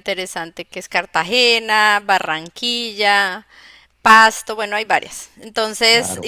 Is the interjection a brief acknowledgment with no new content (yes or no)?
yes